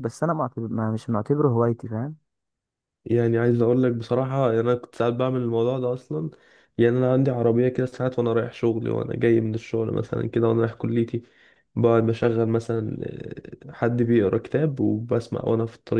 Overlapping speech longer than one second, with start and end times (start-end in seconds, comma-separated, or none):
none